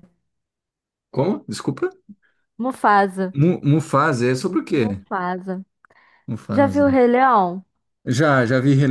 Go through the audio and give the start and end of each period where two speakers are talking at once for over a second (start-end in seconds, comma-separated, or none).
none